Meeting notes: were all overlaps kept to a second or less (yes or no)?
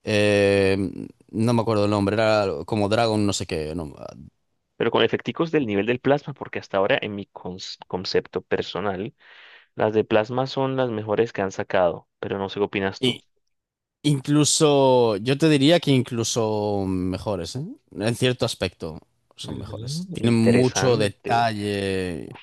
no